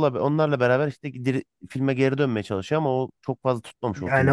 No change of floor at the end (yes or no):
no